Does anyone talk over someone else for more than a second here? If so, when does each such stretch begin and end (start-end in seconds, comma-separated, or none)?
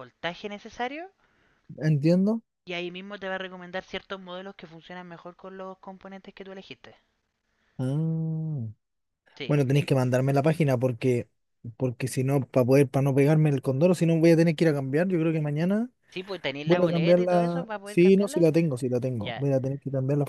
16.6-18.5